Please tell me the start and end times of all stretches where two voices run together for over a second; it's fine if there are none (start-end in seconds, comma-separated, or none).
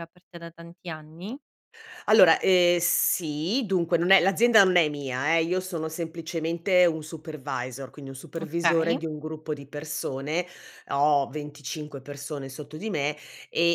none